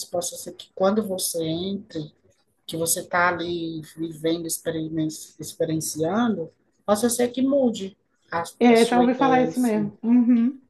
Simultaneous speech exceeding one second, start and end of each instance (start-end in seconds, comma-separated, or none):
8.6-9.9